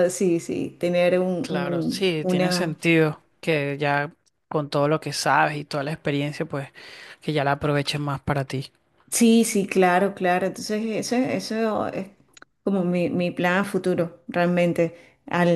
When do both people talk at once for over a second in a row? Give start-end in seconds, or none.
1.4-2.8